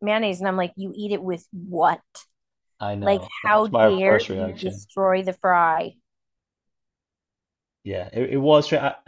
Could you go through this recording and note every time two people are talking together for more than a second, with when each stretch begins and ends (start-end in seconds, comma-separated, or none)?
3.0-4.8